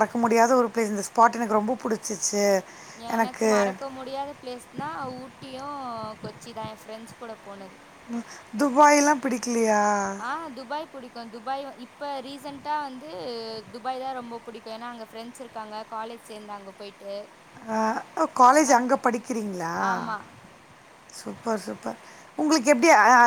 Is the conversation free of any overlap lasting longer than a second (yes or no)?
yes